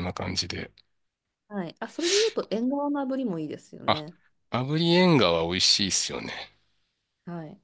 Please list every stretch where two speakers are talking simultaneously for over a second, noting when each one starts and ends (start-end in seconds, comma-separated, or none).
none